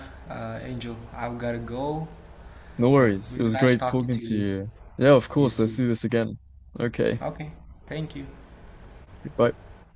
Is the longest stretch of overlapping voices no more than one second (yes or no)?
no